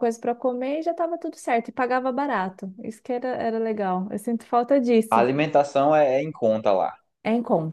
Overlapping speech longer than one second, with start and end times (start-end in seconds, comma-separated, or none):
none